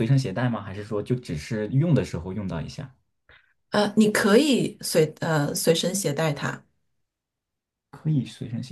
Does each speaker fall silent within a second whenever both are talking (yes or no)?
yes